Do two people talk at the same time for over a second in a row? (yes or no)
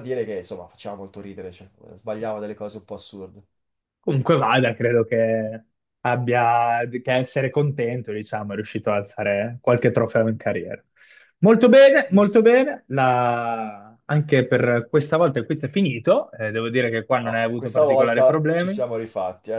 yes